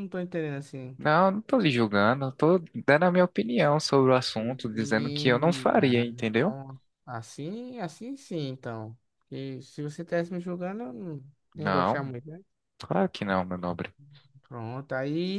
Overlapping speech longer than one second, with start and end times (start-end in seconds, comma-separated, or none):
4.3-6.5